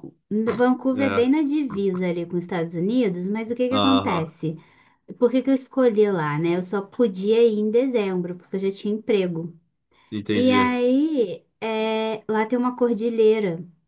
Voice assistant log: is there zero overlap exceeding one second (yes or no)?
yes